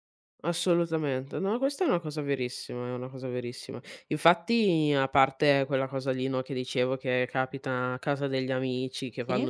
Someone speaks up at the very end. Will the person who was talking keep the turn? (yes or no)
yes